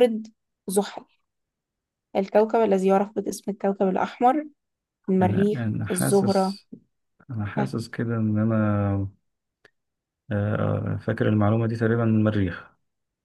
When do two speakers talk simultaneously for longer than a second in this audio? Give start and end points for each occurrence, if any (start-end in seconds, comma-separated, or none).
5.2-6.5